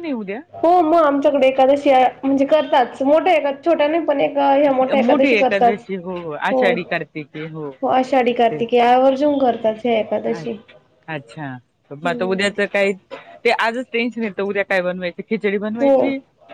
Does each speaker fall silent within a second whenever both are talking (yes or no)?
yes